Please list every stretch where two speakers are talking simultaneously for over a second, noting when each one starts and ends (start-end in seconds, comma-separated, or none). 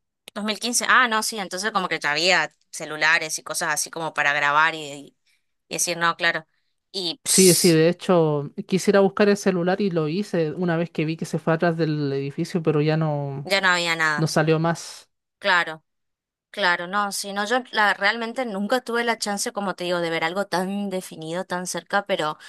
none